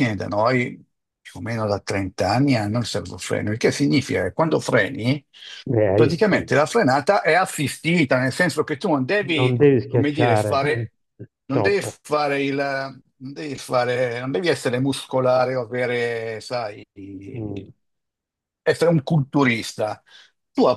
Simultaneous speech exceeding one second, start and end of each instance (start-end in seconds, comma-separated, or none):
9.3-10.8